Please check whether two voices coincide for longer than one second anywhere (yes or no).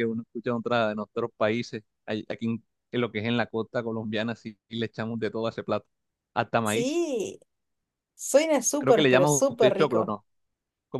yes